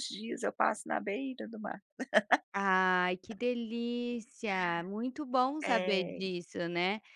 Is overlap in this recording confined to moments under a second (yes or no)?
yes